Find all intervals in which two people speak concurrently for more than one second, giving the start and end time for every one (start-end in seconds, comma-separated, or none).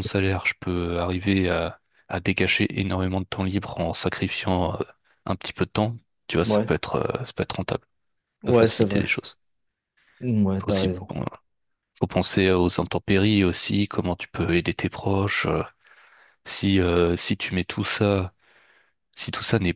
none